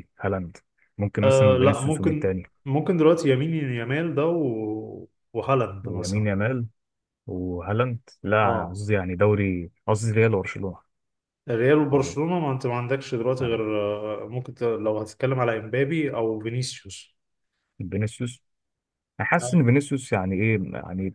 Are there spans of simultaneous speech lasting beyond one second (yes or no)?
yes